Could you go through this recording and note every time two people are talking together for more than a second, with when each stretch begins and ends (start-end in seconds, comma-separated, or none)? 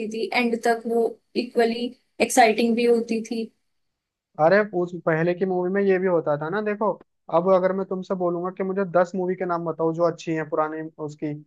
none